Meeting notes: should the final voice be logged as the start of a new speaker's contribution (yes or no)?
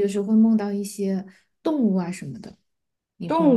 yes